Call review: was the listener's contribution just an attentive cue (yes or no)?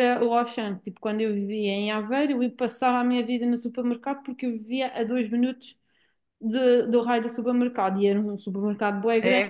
no